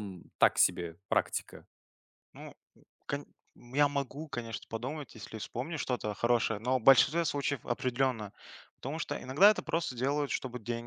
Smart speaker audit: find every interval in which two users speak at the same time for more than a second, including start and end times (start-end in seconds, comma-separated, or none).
none